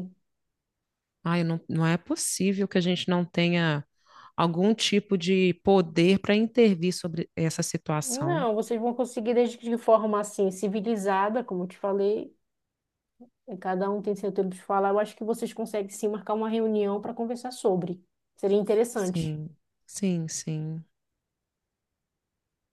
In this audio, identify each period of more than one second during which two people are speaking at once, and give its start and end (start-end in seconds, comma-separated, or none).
none